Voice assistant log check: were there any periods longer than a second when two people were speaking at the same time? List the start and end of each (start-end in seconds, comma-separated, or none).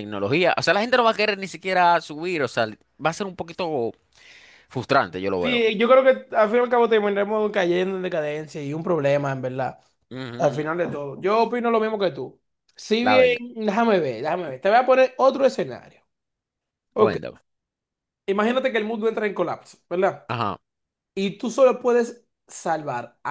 none